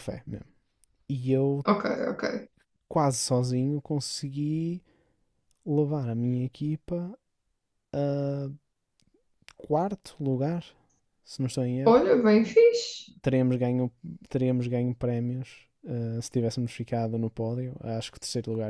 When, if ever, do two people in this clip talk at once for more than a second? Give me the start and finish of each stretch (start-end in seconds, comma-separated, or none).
none